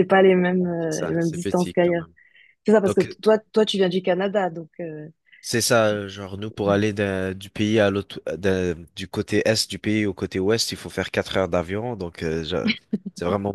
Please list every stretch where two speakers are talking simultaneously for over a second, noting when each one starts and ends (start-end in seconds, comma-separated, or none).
0.8-2.0